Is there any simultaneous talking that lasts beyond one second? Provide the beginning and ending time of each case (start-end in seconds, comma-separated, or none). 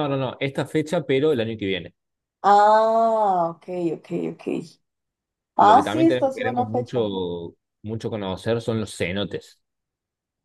5.6-7.1